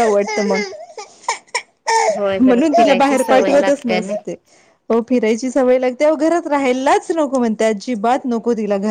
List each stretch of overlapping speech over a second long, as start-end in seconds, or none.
2.4-4.1